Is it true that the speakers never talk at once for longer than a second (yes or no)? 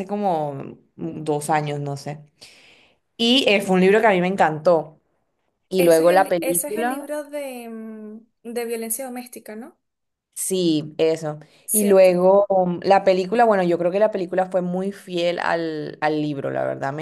no